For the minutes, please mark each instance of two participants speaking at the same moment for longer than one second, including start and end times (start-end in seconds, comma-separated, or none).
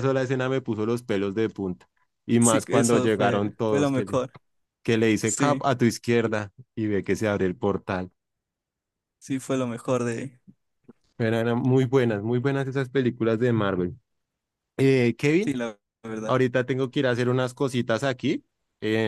2.4-4.2